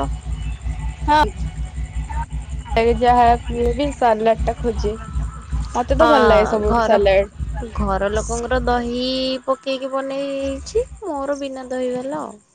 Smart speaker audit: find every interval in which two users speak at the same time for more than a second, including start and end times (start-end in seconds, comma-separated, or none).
none